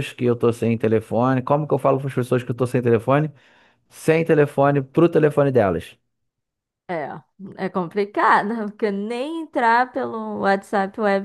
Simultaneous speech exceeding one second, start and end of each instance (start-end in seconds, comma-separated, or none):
none